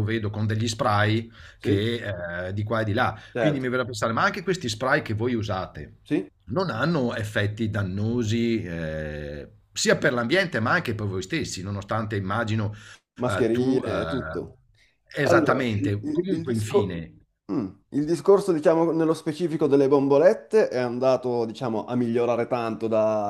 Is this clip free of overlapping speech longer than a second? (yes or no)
no